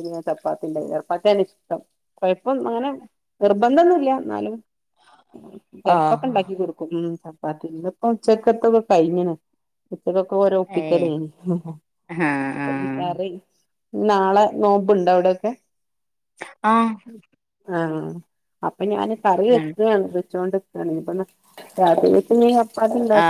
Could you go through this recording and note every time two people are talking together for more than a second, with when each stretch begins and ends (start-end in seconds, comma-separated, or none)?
none